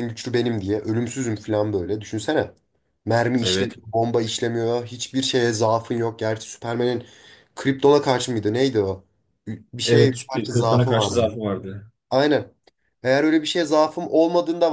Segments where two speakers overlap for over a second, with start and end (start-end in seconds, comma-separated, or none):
9.8-11.2